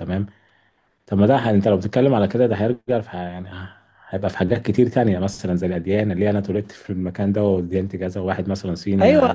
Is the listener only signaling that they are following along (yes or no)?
no